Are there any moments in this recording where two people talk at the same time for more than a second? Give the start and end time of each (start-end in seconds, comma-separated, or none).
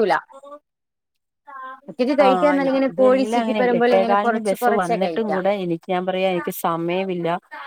2.3-5.3